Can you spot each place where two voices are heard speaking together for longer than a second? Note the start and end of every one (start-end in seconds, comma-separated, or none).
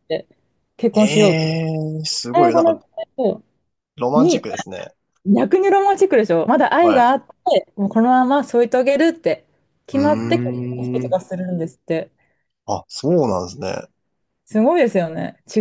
9.9-11.2